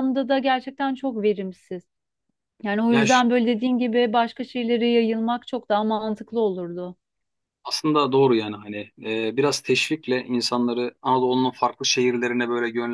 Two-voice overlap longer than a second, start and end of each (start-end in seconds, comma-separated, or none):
none